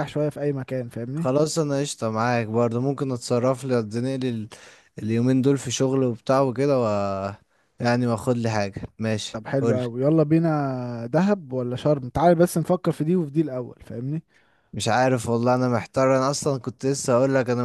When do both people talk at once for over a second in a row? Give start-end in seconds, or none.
none